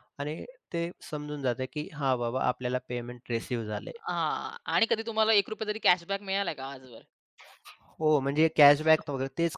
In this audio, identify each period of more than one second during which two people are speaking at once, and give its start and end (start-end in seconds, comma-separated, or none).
none